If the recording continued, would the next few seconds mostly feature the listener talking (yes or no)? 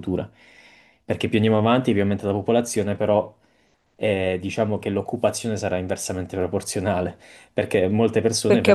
yes